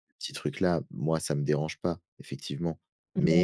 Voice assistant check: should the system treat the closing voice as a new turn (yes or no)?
no